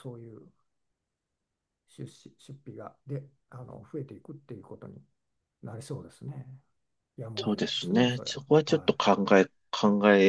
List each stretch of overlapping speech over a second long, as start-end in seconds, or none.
7.4-8.9